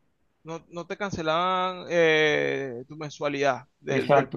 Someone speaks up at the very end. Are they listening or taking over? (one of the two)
taking over